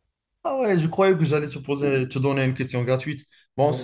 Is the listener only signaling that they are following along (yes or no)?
yes